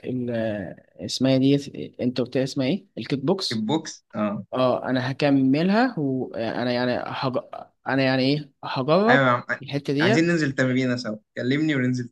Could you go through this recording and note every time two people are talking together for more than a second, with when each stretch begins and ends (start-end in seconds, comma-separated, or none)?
none